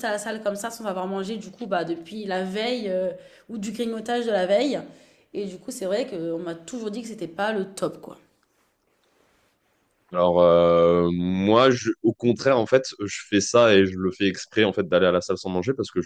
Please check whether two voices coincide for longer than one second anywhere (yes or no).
no